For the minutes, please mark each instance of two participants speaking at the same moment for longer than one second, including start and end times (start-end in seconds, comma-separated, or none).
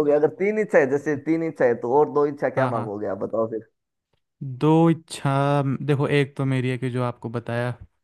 none